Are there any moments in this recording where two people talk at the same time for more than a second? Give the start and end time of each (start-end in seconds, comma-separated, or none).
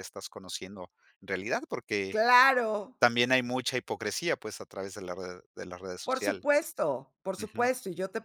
none